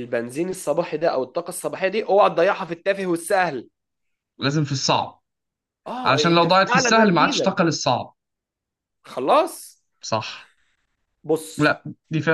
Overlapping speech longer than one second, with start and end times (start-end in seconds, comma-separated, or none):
6.0-7.5